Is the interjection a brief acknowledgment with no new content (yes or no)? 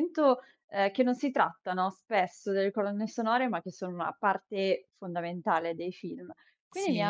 yes